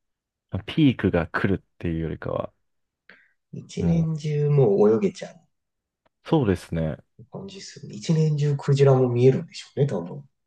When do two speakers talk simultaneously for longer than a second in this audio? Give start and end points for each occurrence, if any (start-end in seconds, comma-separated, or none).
none